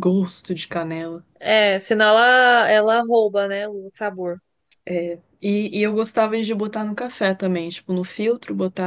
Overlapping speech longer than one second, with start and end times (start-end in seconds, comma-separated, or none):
none